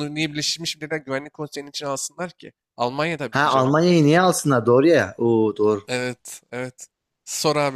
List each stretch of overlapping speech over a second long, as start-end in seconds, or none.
none